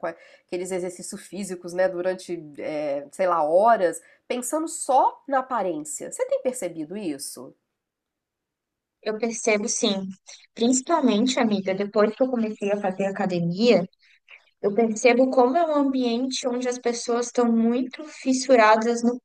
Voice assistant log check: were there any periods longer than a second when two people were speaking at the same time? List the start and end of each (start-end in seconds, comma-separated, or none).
none